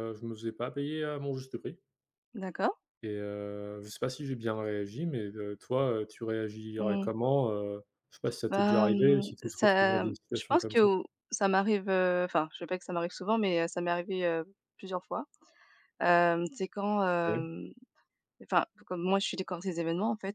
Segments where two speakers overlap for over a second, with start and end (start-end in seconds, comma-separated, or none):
8.5-10.9